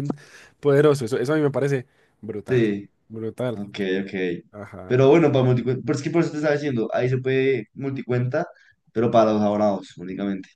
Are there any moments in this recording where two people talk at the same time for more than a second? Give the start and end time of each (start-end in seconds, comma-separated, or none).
none